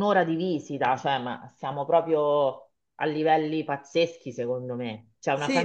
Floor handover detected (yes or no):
yes